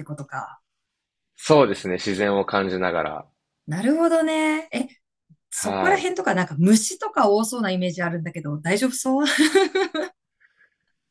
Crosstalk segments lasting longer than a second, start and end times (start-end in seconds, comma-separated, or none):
none